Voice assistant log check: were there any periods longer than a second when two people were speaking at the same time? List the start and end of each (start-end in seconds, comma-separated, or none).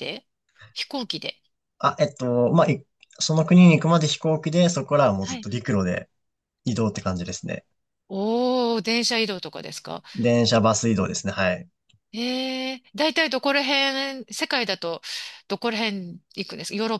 none